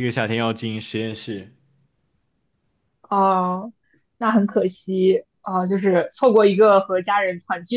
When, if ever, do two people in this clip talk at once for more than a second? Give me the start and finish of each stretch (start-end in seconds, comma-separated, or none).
none